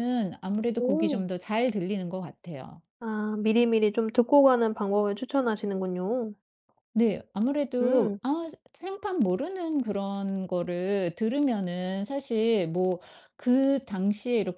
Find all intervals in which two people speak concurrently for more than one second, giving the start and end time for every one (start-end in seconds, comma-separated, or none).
none